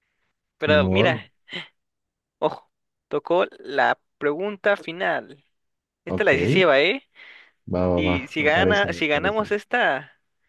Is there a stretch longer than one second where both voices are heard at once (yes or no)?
yes